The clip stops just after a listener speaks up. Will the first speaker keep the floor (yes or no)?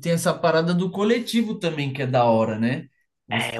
no